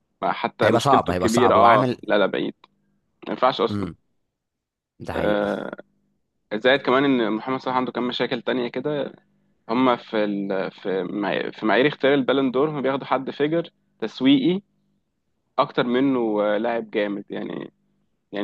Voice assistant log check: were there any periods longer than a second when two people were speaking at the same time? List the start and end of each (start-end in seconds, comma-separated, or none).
0.6-2.0